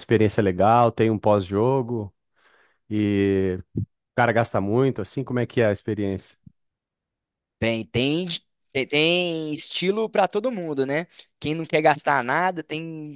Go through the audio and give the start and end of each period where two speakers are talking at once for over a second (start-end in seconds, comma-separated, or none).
none